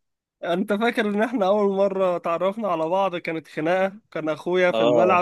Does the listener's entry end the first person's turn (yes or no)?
no